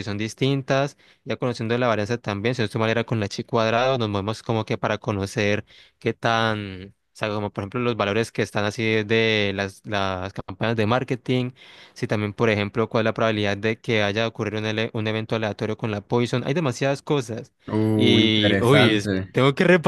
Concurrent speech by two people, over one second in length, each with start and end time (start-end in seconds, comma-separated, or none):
17.9-19.4